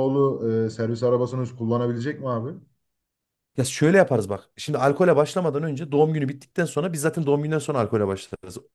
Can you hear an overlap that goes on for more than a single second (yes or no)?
no